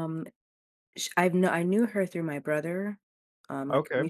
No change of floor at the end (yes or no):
yes